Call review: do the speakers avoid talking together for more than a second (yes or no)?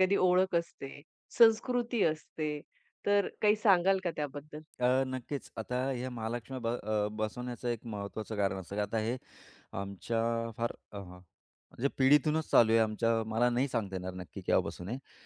yes